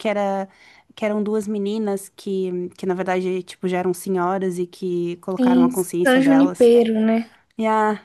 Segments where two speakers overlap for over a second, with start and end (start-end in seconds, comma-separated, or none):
5.4-6.7